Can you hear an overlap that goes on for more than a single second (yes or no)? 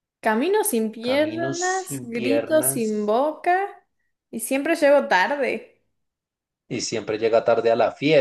yes